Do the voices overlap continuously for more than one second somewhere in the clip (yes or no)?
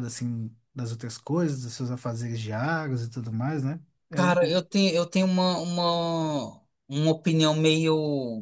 no